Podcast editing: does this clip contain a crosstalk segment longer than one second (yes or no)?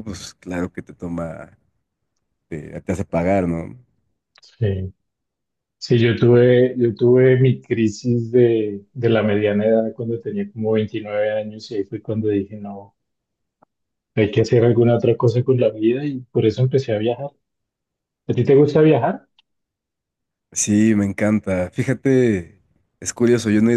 no